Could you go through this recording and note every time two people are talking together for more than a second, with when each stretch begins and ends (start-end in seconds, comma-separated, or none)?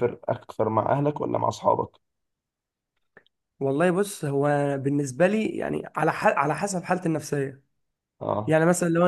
none